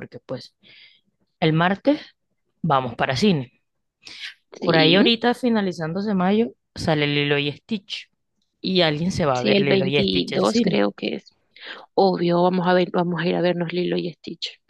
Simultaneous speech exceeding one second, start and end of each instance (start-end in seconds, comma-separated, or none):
9.3-10.8